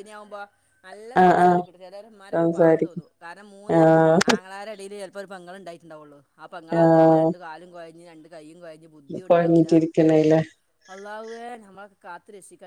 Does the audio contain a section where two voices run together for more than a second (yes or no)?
no